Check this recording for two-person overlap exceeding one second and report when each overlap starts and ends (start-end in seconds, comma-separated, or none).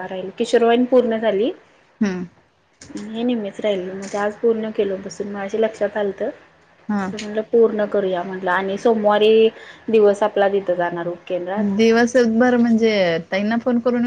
none